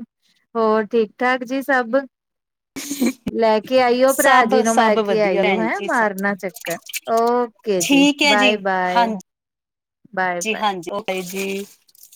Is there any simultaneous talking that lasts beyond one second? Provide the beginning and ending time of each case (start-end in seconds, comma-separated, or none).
4.1-5.9